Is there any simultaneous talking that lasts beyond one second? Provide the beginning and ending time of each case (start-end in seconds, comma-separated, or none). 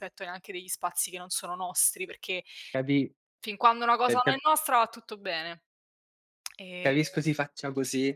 none